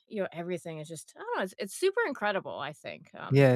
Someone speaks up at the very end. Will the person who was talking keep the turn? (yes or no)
no